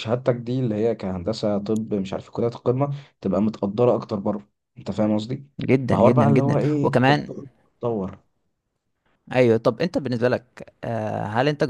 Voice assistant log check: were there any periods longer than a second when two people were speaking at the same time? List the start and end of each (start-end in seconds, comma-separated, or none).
5.9-7.3